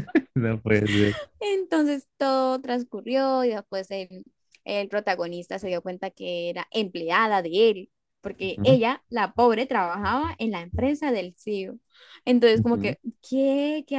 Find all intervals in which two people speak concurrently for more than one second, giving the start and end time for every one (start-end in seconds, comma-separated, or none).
none